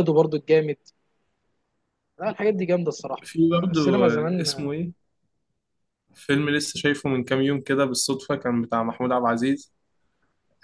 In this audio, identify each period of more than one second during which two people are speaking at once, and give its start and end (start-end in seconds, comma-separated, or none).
3.2-4.7